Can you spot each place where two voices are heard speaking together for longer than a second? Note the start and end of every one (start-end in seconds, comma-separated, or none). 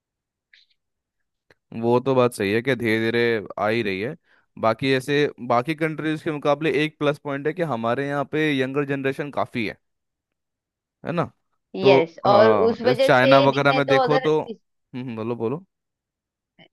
11.8-14.3